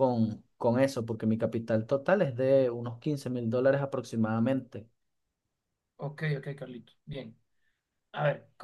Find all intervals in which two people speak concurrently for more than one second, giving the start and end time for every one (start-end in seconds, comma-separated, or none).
none